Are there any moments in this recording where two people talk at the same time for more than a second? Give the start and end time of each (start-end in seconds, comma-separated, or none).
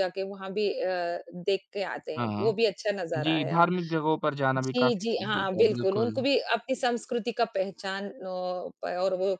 4.6-6.2